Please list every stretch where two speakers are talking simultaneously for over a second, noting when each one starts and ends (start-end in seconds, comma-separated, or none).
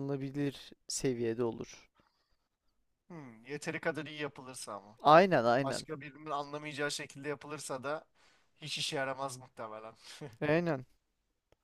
none